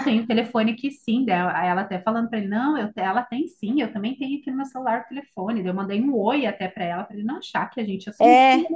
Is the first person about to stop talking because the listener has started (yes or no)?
yes